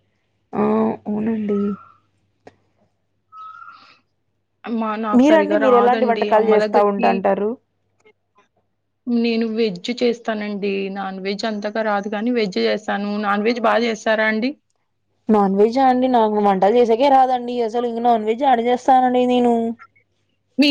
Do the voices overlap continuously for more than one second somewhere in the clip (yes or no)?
yes